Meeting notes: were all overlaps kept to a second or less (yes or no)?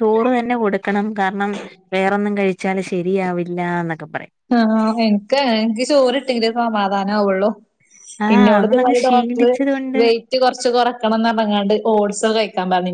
no